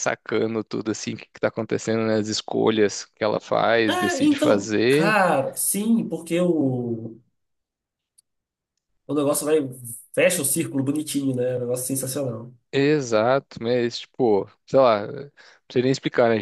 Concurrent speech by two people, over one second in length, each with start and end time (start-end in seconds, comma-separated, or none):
3.9-5.2